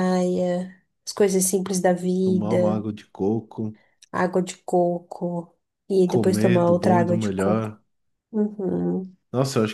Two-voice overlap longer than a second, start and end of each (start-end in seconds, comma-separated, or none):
6.1-7.8